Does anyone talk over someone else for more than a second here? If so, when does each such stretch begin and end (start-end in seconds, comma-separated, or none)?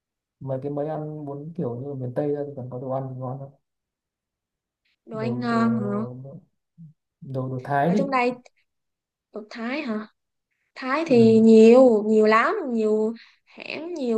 none